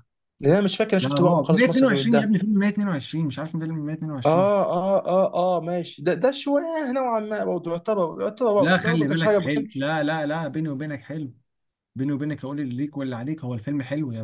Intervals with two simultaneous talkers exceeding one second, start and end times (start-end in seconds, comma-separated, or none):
1.0-2.4, 8.6-9.9